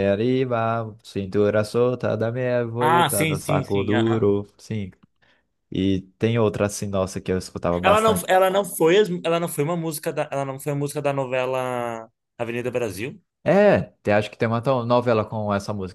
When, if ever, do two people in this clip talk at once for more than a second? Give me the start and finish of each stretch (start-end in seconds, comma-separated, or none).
2.8-4.3